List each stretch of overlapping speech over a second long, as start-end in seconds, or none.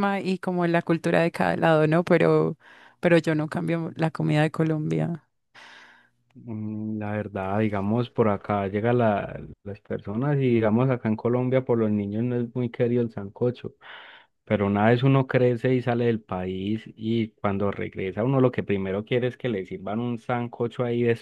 none